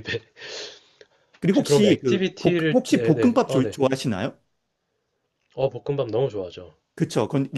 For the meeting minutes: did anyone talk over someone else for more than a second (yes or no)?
yes